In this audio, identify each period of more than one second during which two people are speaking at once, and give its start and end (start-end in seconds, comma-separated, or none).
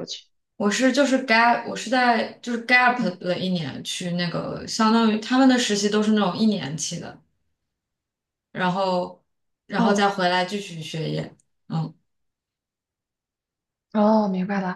none